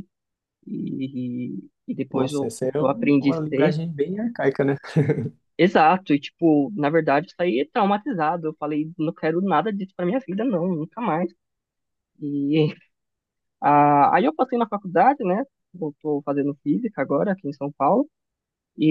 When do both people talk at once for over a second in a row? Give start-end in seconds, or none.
2.1-3.8